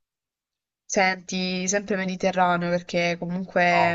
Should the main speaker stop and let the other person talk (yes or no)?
no